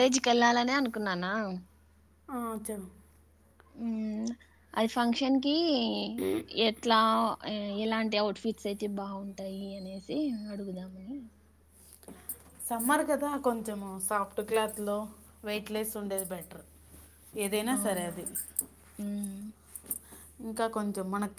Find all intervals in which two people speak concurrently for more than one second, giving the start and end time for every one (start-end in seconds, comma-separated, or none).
none